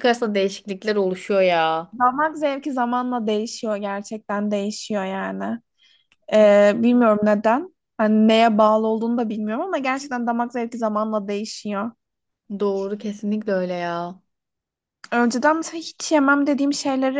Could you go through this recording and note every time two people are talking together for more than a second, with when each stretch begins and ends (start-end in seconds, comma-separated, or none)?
none